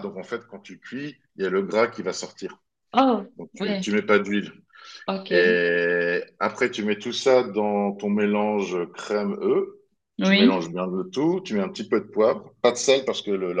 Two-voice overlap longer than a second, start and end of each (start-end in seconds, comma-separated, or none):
none